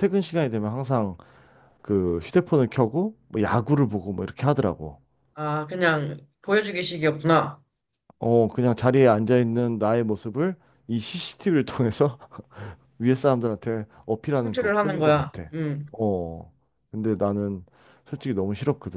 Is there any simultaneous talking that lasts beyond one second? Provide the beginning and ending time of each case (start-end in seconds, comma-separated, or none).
14.3-15.5